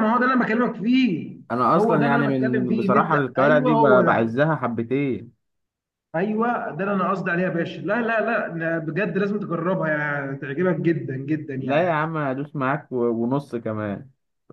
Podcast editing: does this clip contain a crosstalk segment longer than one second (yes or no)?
yes